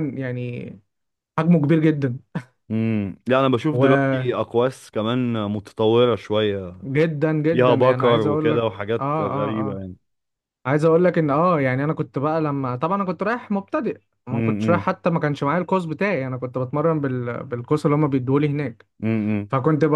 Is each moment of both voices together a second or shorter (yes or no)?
no